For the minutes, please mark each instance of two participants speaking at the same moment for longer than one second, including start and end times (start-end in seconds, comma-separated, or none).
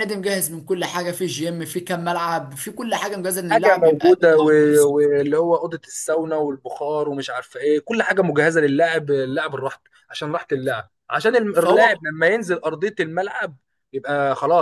3.5-4.9